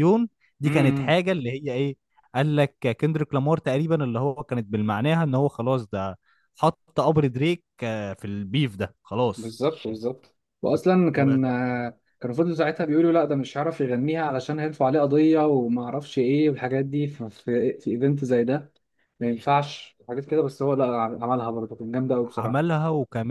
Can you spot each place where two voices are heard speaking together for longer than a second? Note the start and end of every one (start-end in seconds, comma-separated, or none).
none